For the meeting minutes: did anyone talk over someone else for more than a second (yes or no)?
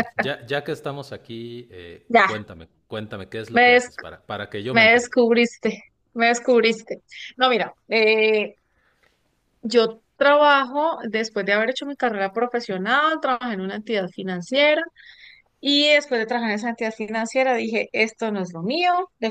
no